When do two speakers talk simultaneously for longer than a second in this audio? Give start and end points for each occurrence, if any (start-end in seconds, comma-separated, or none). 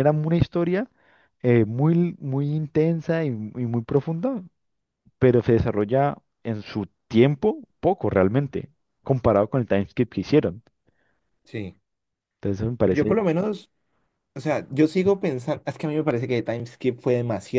none